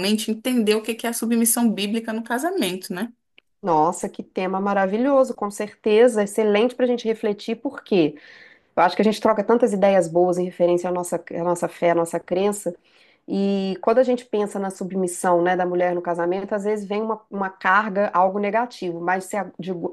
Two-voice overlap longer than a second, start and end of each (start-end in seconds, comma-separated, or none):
none